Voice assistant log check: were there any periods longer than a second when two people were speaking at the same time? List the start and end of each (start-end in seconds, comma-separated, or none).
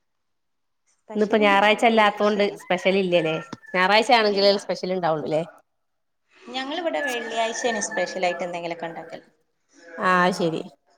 1.1-2.6